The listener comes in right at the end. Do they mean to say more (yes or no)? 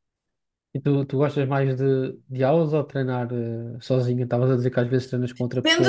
yes